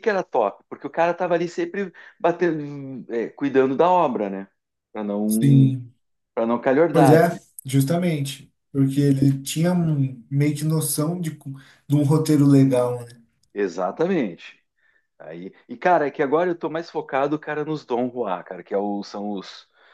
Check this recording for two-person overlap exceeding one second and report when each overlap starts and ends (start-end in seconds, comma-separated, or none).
none